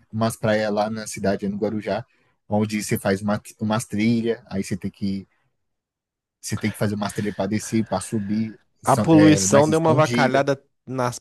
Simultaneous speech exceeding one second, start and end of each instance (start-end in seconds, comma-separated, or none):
8.8-10.4